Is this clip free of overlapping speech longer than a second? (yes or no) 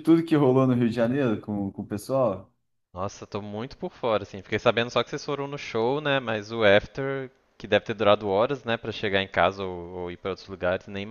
yes